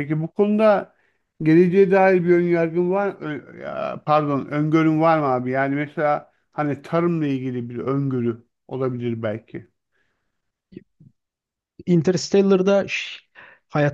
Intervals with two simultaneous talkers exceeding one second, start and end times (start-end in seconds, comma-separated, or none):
none